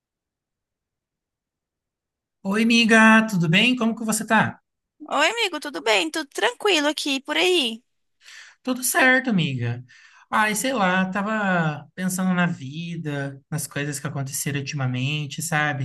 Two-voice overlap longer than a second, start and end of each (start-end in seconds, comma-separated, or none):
none